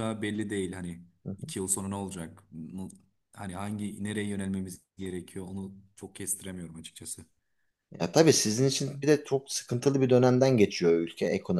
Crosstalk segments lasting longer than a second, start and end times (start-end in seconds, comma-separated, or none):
none